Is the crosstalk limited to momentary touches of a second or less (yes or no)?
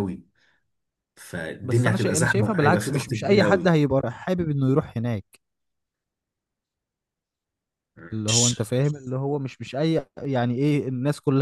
no